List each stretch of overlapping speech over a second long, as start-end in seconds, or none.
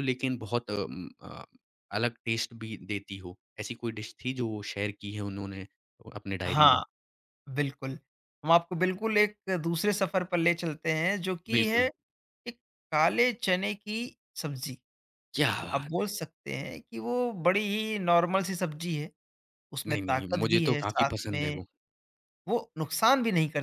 19.9-21.6